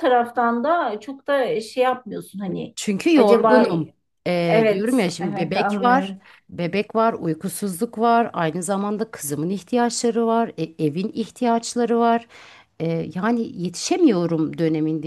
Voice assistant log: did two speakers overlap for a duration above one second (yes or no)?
yes